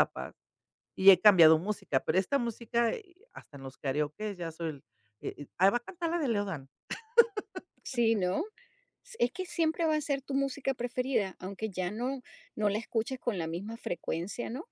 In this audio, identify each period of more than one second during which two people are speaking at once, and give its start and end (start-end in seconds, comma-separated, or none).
none